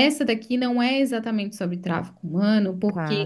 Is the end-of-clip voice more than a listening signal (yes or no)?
no